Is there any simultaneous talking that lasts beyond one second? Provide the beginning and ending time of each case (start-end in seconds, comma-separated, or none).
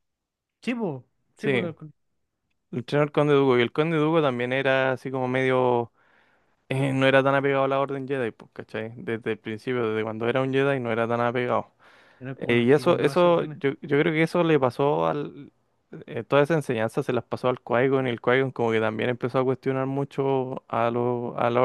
12.4-13.6